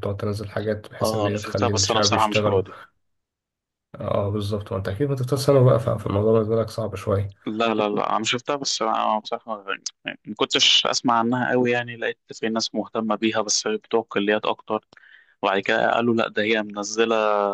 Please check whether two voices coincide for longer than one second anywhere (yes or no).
yes